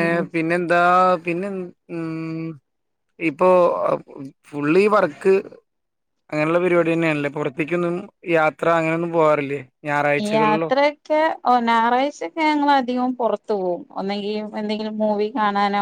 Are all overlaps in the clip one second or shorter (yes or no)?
yes